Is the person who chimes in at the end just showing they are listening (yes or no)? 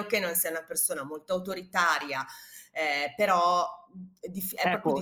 no